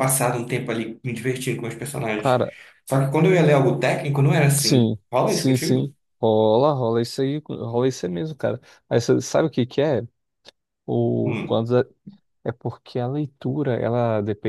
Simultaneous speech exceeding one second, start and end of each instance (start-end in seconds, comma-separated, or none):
4.6-5.9